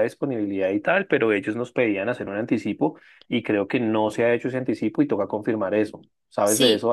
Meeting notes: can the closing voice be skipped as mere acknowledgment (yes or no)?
no